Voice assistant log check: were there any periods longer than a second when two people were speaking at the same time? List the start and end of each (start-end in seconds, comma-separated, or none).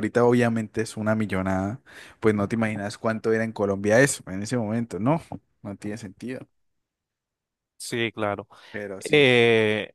none